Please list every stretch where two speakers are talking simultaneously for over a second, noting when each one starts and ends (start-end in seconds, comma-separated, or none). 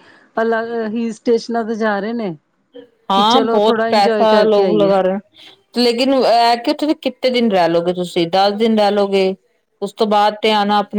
3.1-4.9